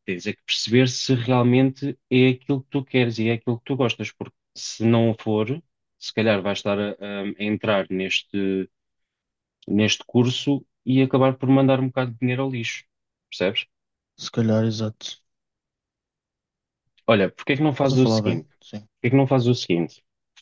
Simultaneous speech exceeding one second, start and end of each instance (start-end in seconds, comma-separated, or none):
17.5-18.9